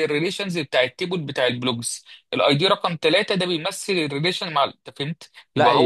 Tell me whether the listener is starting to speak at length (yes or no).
yes